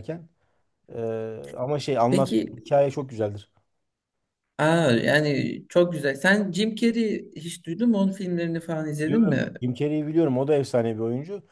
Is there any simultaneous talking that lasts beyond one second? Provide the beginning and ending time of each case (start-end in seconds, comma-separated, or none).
none